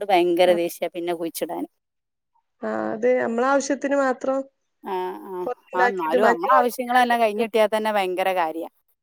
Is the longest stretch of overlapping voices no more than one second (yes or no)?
no